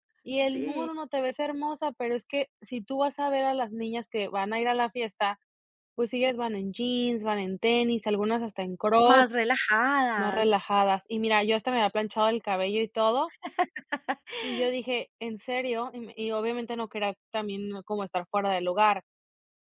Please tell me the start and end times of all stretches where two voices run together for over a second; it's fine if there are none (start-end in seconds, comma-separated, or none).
none